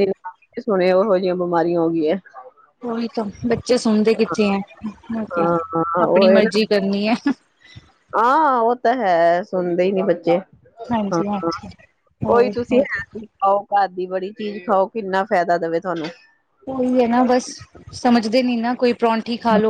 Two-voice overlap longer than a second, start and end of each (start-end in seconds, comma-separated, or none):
none